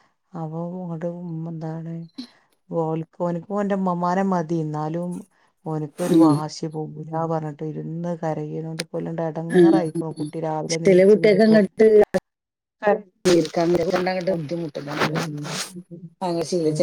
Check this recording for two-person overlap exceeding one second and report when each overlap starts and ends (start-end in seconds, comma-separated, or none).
none